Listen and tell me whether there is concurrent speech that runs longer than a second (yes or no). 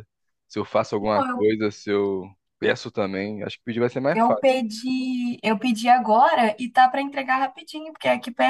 no